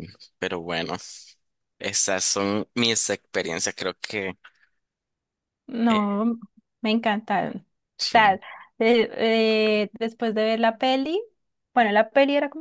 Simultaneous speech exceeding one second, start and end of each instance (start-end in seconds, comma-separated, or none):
none